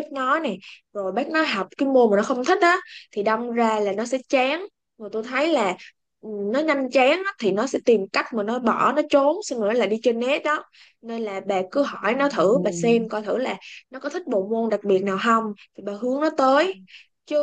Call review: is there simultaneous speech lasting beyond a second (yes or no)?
yes